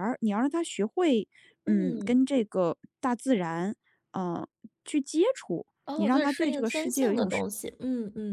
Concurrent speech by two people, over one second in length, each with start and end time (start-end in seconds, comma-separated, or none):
5.8-7.3